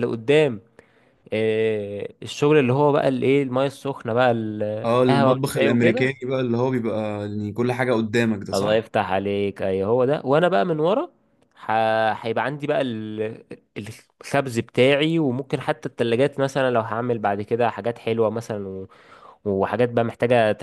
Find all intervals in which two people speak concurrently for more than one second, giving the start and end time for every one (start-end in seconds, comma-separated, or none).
4.8-6.1